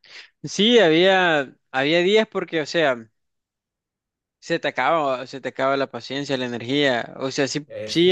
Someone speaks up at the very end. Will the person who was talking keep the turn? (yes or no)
yes